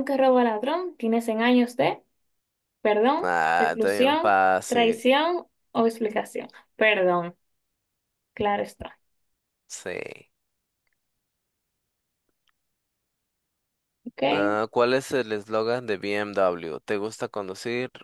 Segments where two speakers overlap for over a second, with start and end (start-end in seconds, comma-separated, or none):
3.2-5.0